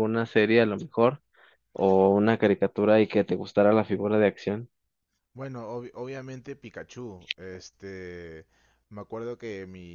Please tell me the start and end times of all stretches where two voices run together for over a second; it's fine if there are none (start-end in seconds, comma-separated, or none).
none